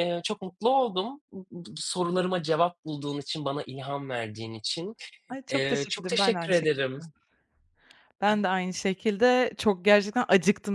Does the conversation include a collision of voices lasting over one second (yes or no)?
yes